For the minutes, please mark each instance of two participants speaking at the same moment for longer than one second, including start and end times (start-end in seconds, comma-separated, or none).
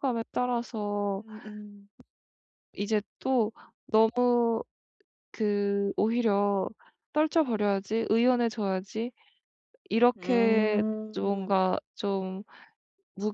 10.2-11.6